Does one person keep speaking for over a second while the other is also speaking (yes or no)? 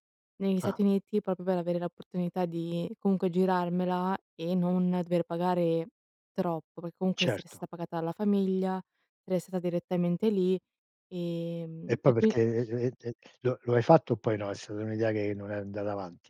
no